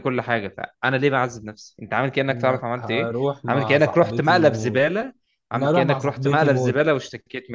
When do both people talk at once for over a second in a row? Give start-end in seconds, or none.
2.3-4.8, 5.5-6.8